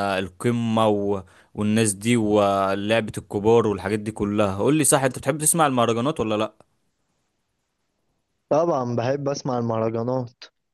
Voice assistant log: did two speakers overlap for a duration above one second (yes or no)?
no